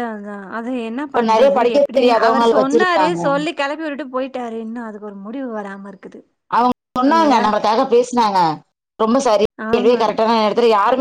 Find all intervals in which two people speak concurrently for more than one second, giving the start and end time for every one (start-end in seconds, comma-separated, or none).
1.1-3.2